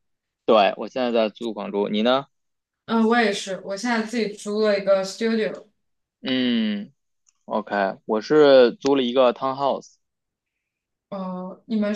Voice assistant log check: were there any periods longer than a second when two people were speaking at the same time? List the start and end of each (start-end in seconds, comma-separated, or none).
none